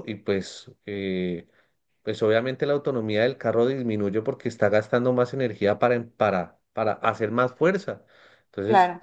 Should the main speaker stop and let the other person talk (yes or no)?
no